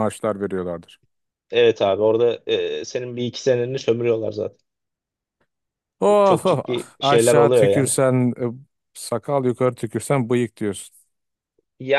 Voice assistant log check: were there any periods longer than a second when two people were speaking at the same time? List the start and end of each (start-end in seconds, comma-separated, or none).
6.2-7.9